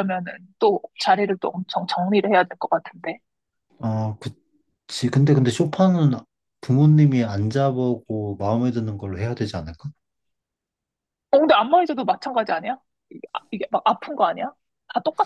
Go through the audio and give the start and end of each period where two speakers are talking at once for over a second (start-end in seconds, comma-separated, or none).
none